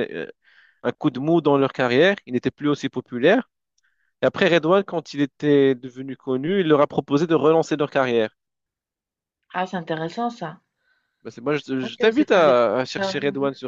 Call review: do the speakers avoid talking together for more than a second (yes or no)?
no